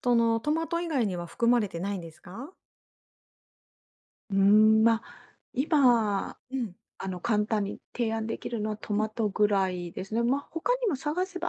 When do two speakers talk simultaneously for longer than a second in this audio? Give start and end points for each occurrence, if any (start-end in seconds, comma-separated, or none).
none